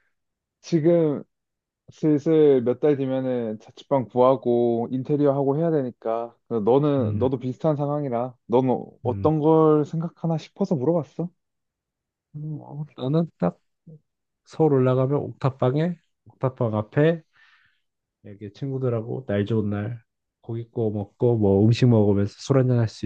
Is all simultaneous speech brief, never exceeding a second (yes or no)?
yes